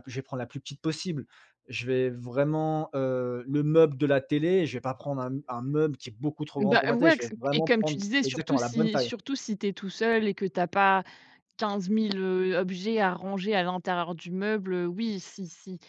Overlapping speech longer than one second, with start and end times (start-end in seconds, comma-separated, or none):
6.6-9.1